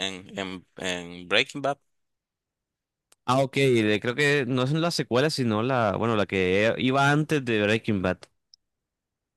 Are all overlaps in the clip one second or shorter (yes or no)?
yes